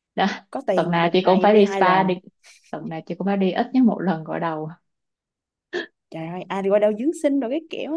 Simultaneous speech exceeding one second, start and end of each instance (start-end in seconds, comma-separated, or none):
0.7-2.1